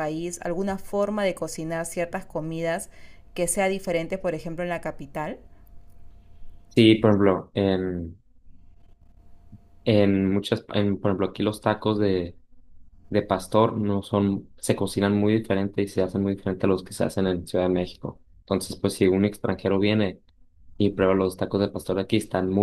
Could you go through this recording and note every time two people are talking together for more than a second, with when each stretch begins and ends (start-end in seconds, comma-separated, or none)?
none